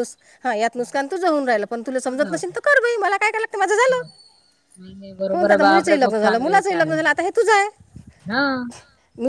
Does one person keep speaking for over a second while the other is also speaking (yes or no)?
yes